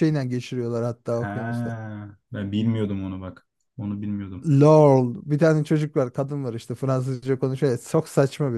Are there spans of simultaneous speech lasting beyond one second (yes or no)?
no